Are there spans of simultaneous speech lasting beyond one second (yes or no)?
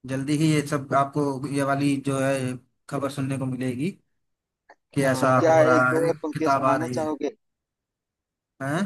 yes